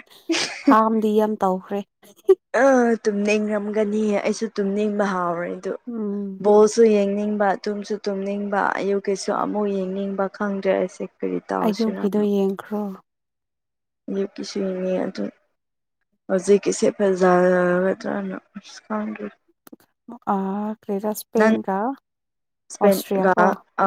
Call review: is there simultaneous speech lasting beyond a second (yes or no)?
no